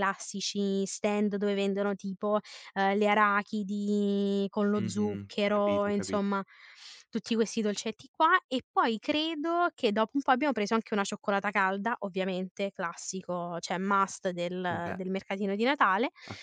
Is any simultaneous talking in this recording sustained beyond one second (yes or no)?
yes